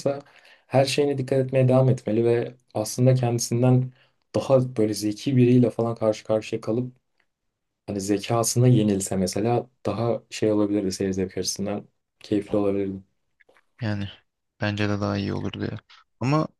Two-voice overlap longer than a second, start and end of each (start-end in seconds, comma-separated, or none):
none